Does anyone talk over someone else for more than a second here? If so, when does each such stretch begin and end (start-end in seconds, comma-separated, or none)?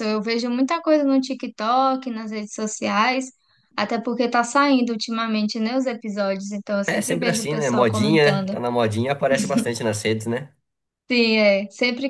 6.8-8.6